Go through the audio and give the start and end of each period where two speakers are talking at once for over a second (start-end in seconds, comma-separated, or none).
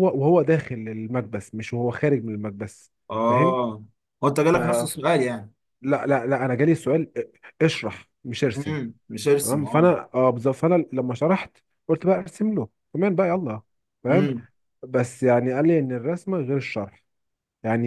none